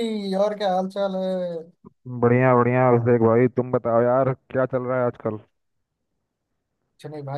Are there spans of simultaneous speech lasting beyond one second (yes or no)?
no